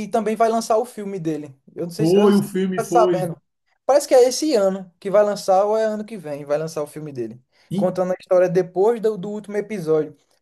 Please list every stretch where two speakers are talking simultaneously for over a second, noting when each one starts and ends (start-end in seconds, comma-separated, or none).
1.9-3.3